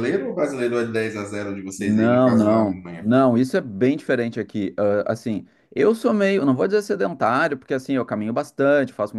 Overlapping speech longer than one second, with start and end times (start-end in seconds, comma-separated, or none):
1.8-3.1